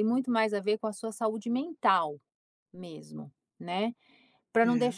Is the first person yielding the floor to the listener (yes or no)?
no